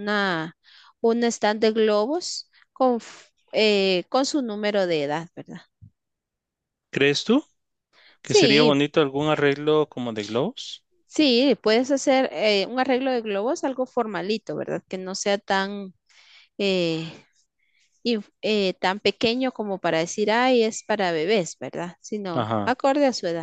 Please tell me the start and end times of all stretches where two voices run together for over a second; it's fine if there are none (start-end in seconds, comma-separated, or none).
none